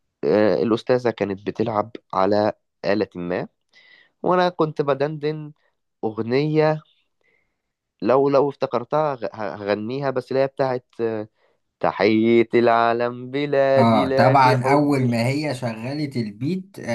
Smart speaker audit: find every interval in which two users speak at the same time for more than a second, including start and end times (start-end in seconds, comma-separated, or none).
13.8-15.1